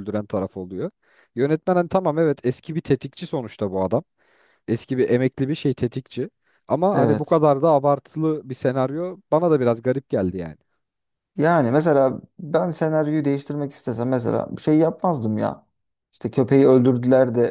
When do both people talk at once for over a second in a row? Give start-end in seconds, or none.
none